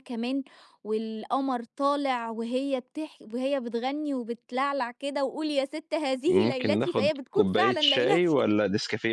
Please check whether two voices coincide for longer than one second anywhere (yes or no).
yes